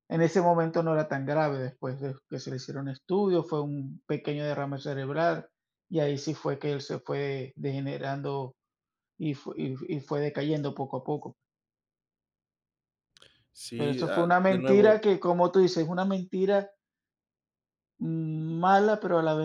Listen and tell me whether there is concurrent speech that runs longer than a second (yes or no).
yes